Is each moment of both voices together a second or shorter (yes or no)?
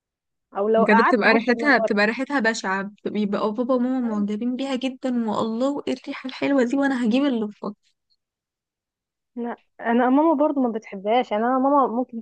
no